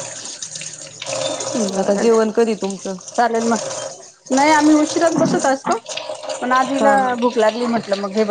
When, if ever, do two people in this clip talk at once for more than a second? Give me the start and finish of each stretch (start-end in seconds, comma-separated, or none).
none